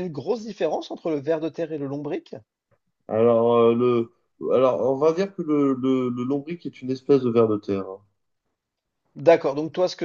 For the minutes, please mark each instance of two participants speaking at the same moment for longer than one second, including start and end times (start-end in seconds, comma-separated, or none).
none